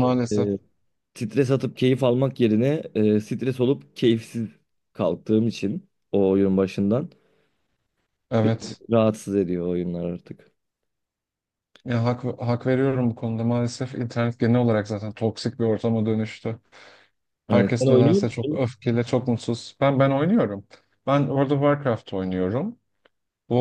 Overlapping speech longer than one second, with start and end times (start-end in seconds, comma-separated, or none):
17.5-18.7